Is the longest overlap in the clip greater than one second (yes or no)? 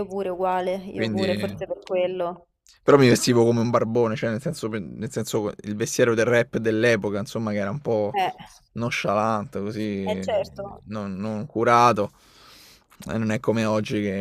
no